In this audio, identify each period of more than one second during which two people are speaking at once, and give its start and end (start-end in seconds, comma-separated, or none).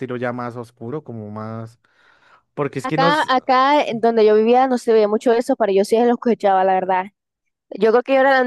none